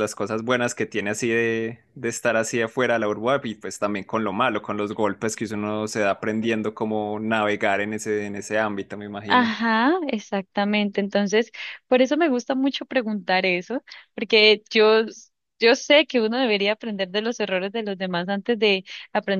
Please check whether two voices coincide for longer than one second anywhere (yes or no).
no